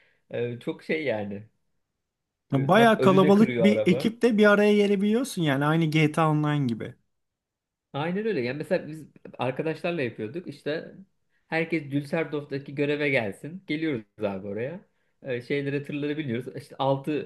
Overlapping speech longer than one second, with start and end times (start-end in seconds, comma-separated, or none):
2.5-4.2